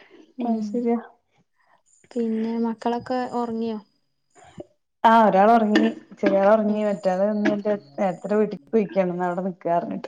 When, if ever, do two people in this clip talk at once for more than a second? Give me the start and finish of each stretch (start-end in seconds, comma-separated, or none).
none